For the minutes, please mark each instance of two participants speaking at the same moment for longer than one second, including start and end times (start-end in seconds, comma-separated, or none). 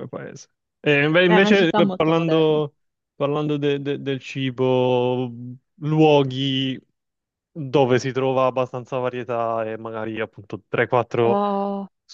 1.2-2.6